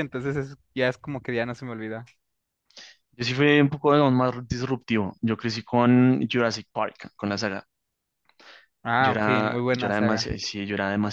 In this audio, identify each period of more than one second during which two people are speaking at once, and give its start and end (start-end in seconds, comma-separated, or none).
9.0-10.2